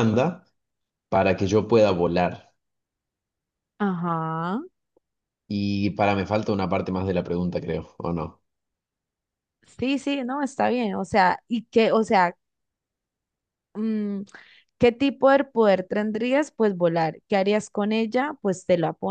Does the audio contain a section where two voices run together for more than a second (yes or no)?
no